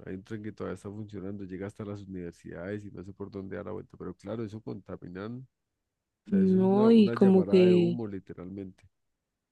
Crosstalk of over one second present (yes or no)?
yes